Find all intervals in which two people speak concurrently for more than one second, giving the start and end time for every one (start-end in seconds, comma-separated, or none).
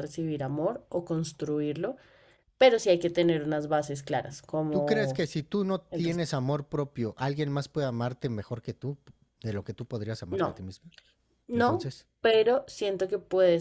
none